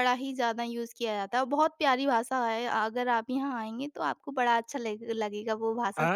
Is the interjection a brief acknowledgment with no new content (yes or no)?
no